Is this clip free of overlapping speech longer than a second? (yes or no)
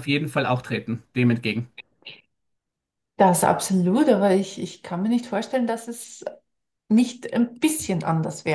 yes